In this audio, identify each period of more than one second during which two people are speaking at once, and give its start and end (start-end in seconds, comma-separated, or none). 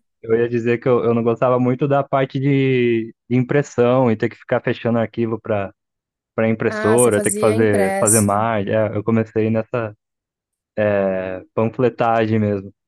6.7-8.5